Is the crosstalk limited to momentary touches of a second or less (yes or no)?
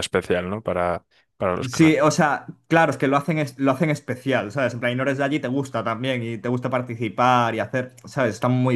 yes